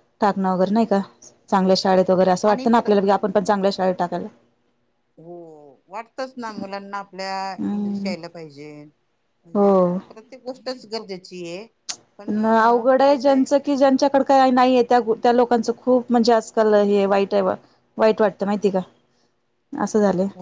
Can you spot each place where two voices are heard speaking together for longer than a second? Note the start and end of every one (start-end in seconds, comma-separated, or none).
none